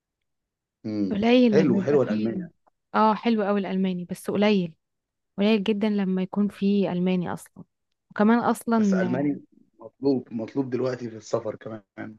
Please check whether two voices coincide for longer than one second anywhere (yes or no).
yes